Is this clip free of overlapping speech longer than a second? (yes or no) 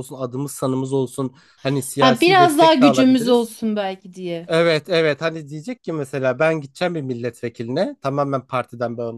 no